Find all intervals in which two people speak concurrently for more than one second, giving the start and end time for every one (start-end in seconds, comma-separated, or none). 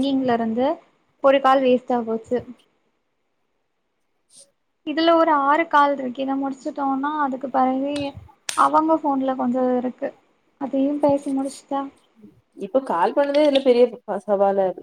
none